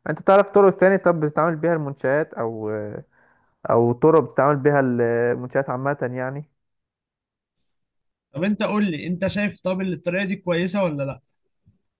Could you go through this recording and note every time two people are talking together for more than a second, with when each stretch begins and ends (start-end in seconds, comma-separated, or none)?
none